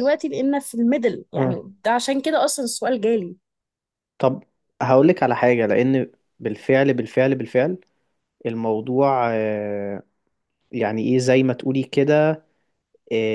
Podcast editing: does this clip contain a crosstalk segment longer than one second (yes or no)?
no